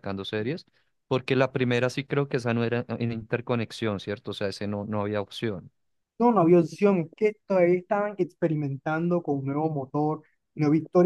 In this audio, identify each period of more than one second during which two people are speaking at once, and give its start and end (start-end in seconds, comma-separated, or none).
none